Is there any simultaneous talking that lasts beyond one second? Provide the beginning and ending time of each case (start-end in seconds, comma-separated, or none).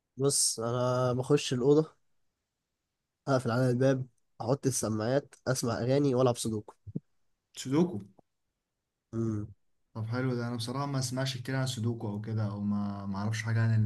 none